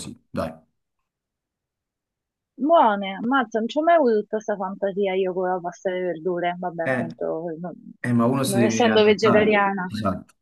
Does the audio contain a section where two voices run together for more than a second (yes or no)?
yes